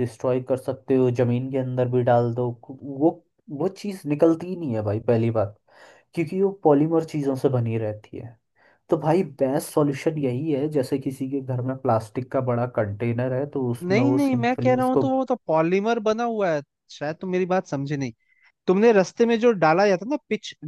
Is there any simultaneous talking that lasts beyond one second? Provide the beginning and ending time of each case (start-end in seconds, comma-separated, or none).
13.8-15.0